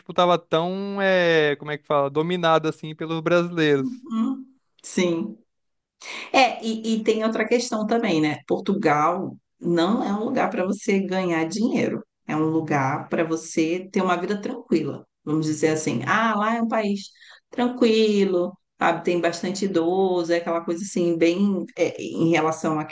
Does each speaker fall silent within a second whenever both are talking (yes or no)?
yes